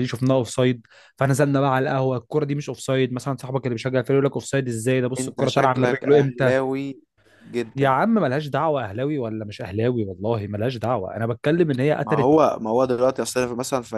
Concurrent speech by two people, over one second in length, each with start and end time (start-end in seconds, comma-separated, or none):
5.2-6.5